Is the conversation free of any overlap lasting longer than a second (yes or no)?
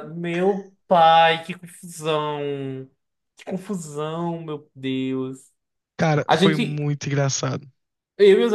yes